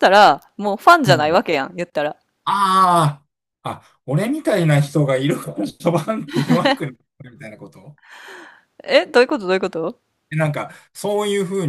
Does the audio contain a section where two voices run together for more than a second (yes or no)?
no